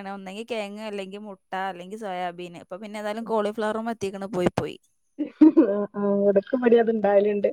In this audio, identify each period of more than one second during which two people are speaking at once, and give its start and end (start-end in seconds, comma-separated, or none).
none